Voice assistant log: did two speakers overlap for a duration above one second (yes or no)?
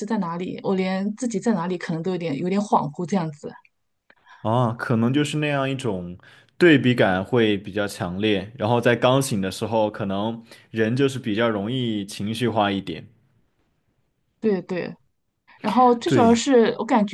no